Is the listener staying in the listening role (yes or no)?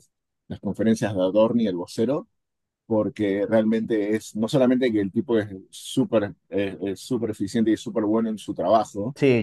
no